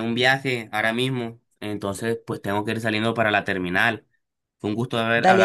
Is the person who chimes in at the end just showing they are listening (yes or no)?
yes